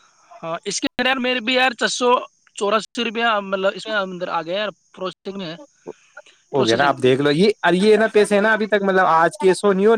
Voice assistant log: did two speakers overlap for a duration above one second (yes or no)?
no